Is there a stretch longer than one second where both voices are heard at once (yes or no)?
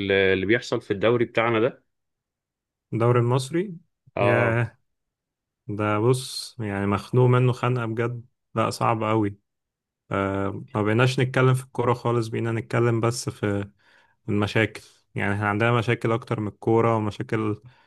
no